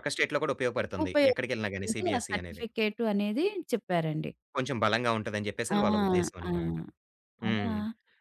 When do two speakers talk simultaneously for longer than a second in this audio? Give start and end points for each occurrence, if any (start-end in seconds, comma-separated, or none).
1.0-2.6